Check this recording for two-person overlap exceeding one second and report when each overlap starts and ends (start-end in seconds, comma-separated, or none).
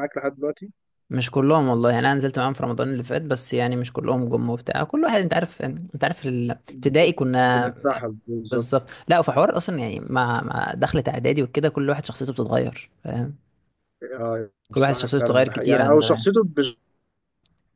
14.7-16.2